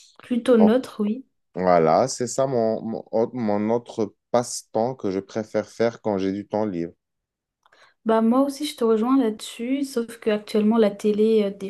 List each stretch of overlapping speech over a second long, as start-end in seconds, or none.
none